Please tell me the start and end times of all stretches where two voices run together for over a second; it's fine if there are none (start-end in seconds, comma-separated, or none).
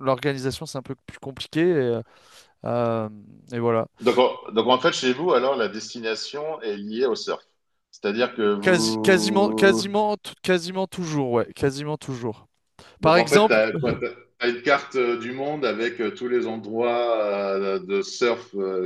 8.6-9.8